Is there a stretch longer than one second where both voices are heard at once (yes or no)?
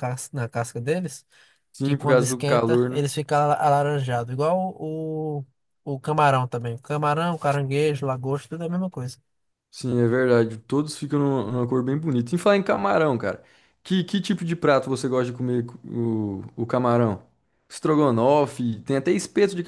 yes